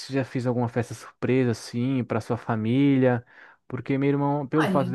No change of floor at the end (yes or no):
yes